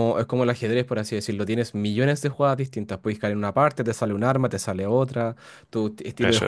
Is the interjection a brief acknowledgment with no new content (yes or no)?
yes